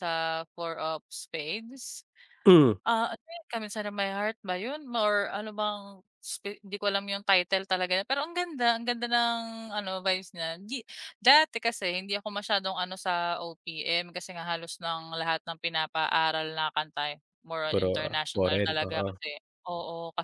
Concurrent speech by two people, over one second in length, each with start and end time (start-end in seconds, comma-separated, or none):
17.7-19.1